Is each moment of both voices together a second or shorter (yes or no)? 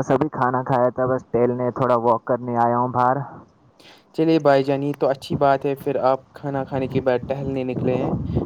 yes